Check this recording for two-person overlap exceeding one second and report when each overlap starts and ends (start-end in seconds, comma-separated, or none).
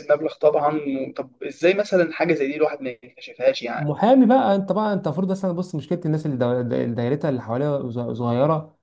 none